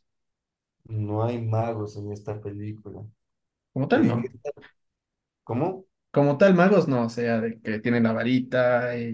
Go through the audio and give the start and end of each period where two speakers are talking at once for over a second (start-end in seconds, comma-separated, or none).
none